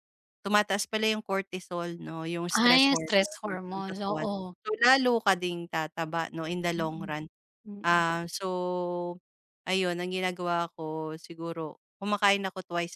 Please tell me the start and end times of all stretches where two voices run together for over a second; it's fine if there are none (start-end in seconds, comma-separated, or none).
2.6-4.3